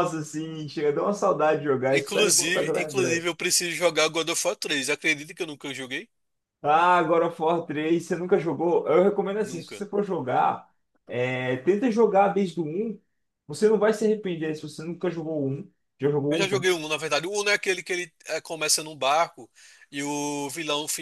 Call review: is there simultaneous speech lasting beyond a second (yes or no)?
yes